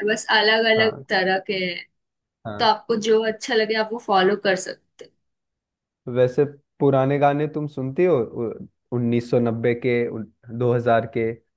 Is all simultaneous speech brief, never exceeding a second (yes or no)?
yes